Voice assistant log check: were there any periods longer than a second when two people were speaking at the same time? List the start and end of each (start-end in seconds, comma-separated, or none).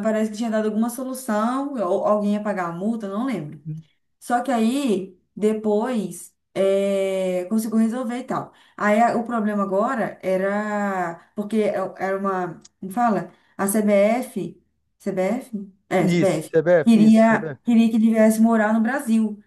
16.0-17.6